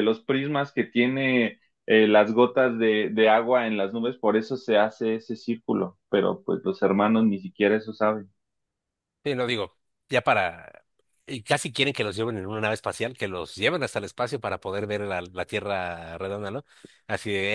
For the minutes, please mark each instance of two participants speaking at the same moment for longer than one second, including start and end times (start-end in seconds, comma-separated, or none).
none